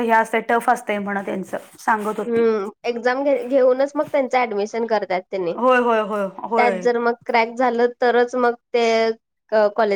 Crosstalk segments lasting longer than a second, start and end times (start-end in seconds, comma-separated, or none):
none